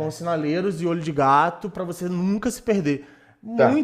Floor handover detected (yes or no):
no